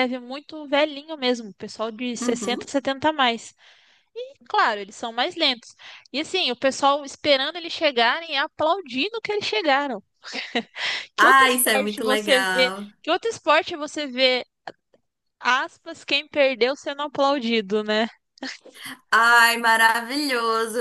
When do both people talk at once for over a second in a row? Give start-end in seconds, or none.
11.2-12.9